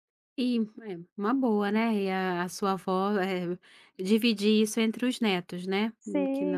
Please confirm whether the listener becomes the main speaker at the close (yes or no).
yes